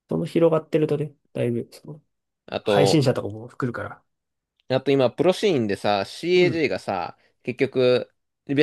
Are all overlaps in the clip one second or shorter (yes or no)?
yes